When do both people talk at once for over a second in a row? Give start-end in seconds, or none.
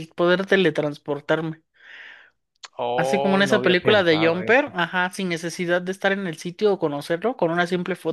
3.0-4.5